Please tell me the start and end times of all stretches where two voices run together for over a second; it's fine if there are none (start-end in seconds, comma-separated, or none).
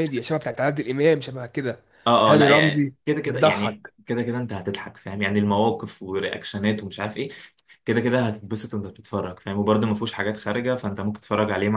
2.3-3.9